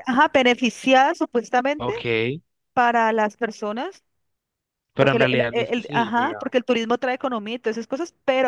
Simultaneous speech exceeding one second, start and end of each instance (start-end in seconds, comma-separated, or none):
5.0-6.4